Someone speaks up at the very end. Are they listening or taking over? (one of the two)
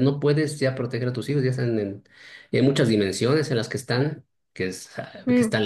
listening